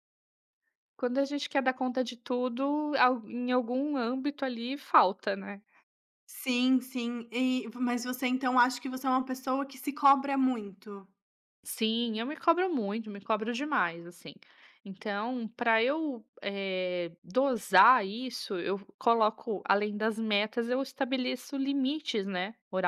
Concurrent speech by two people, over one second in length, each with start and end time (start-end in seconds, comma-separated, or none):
none